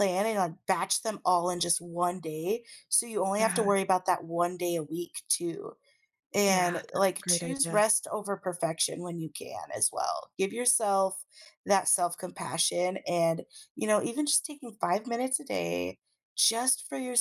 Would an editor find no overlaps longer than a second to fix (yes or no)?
no